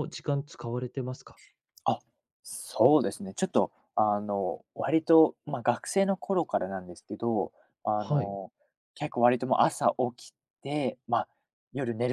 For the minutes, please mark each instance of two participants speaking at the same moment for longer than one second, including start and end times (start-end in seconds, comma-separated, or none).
none